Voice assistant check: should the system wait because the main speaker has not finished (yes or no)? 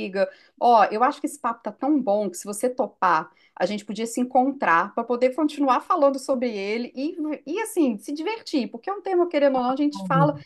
yes